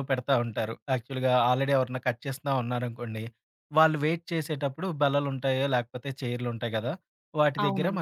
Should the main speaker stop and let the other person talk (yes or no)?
no